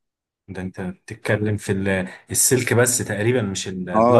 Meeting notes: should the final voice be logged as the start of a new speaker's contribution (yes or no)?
yes